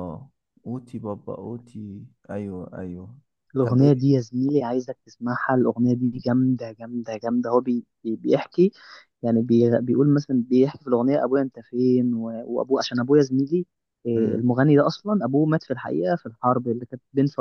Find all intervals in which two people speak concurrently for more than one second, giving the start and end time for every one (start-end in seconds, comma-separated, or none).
none